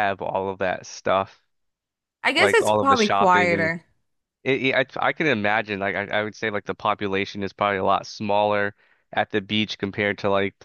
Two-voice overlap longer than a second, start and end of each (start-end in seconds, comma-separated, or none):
2.4-3.7